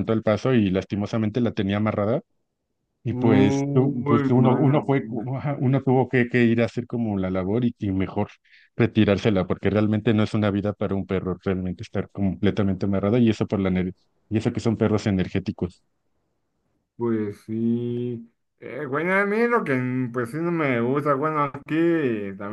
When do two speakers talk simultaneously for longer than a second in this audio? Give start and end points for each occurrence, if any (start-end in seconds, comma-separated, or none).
3.1-5.3